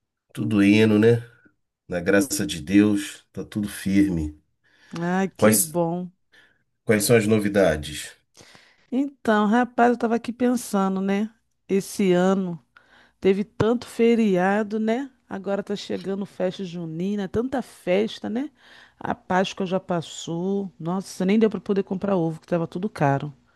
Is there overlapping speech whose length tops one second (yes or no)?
no